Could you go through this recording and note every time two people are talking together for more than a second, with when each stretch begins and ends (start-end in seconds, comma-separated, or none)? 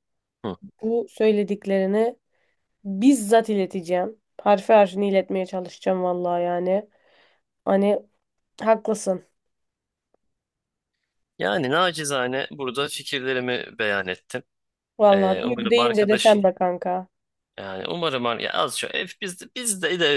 15.1-16.4